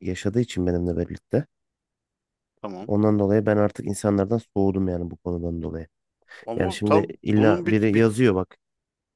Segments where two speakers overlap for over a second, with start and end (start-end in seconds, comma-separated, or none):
6.6-8.1